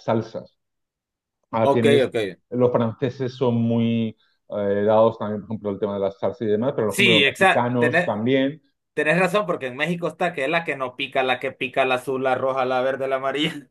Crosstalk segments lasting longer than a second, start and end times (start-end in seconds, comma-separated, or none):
6.9-8.2